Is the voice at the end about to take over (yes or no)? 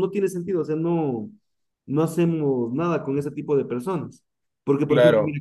no